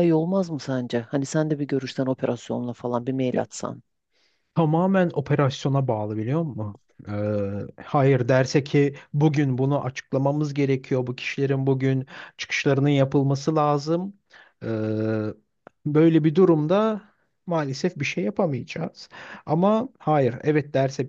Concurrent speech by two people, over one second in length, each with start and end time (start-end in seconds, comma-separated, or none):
none